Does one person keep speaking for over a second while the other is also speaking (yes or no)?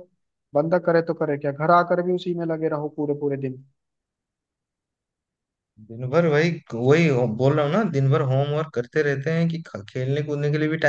no